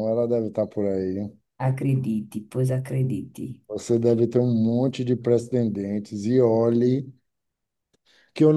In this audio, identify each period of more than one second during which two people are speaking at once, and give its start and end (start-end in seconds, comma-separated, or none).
none